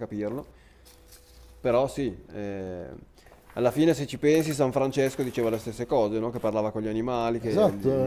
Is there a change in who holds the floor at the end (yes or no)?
yes